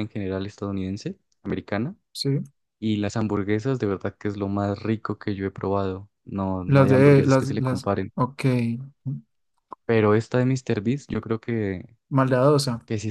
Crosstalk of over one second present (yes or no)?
yes